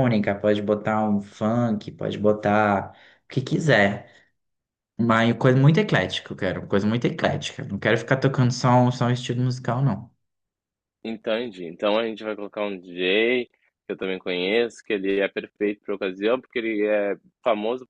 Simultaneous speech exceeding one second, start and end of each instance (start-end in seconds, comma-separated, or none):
none